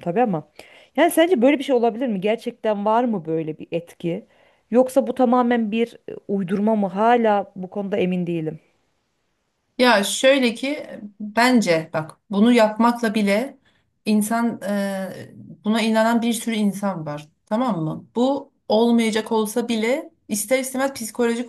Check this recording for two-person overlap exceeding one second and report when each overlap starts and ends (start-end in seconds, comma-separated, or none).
none